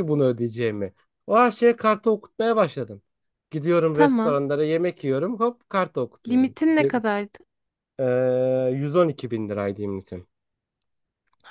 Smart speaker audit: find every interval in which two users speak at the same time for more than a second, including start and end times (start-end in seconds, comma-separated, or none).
none